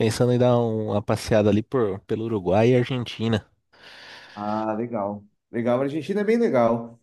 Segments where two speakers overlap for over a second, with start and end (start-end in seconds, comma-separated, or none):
none